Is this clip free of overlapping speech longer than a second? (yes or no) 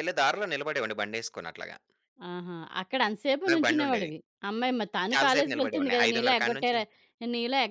no